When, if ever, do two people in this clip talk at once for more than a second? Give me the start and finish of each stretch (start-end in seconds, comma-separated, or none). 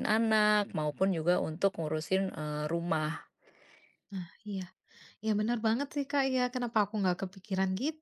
none